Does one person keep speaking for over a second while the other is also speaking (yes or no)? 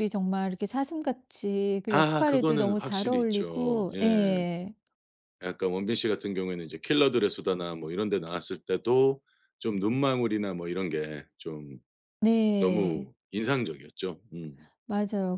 yes